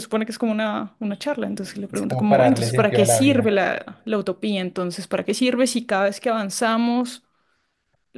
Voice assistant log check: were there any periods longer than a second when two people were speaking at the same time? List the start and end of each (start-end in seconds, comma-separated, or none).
1.9-3.5